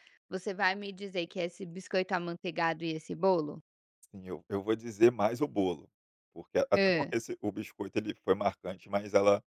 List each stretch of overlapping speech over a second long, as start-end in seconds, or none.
none